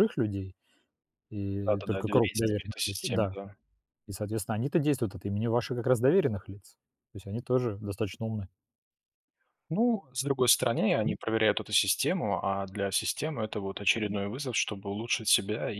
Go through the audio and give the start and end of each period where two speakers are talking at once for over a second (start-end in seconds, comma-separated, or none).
1.6-3.4